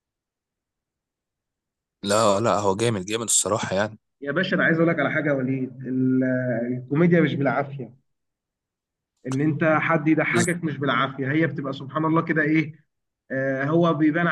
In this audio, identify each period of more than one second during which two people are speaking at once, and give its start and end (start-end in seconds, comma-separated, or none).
none